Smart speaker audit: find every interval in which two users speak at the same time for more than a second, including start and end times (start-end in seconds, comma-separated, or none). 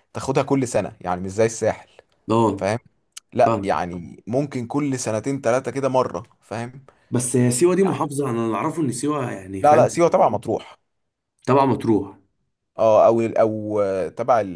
none